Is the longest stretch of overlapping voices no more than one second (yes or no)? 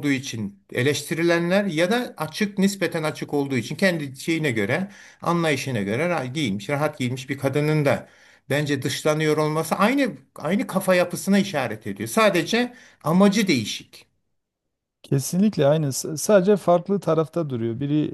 yes